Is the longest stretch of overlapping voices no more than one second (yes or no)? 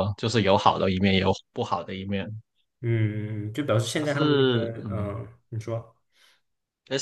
no